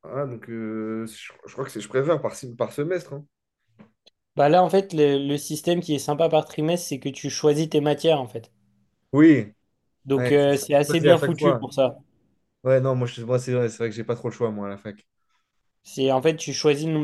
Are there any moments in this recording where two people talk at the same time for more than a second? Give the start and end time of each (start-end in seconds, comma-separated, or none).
10.2-11.7